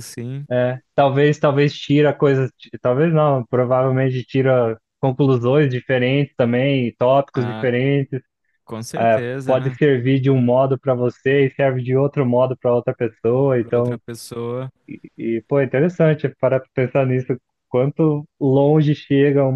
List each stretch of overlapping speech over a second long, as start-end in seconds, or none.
none